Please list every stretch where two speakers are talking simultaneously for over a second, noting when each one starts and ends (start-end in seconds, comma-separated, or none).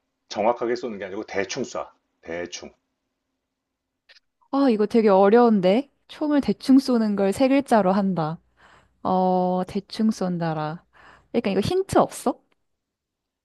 none